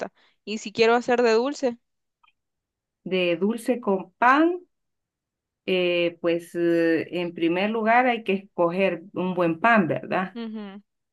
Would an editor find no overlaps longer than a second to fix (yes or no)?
yes